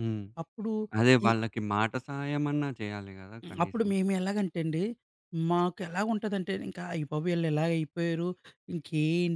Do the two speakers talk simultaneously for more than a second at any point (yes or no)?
no